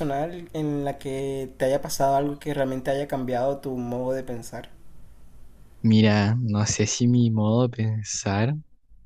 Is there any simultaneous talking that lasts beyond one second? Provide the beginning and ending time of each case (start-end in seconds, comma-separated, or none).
none